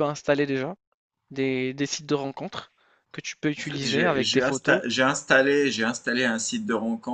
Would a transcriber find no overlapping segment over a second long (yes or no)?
no